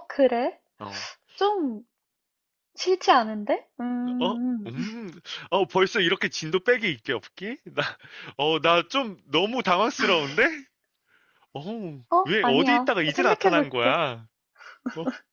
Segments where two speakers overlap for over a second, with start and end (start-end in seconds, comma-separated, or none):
12.1-14.0